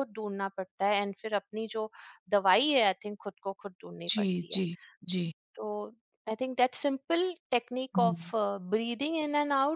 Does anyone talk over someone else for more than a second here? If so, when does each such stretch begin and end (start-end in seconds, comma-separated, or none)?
none